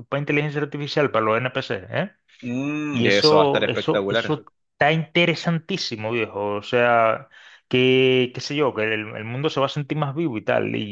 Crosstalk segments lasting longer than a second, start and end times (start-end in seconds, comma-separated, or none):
2.9-4.3